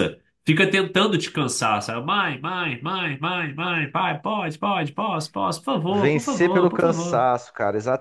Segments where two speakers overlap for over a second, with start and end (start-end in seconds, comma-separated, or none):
5.9-7.3